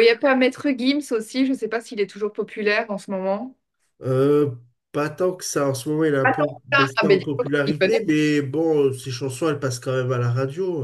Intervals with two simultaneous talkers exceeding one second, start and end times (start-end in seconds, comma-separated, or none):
6.2-8.0